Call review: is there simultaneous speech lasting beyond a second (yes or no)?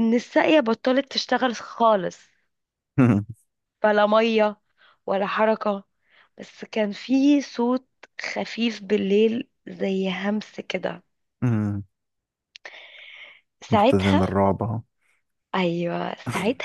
no